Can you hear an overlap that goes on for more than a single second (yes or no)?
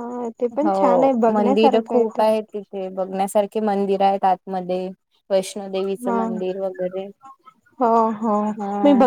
yes